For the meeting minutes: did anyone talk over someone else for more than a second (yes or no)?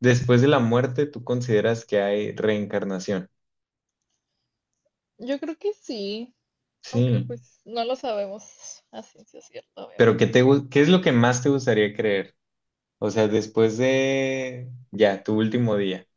no